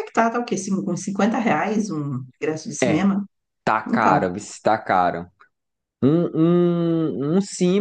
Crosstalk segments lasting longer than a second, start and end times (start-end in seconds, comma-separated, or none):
none